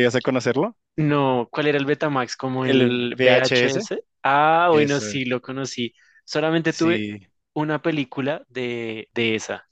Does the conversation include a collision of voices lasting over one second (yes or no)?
yes